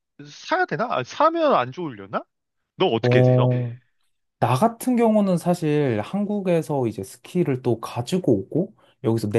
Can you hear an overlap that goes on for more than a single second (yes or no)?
no